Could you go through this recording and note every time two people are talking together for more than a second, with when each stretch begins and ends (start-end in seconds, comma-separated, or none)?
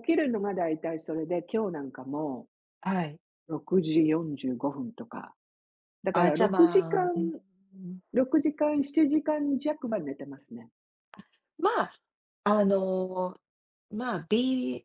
6.1-7.4